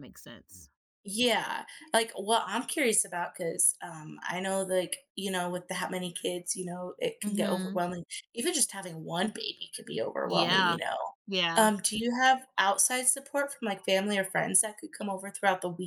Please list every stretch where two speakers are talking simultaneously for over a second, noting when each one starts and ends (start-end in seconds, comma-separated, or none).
none